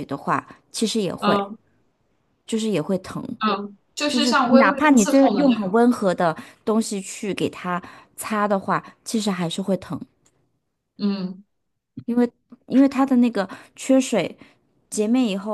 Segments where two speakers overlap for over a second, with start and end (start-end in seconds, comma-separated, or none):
4.1-5.8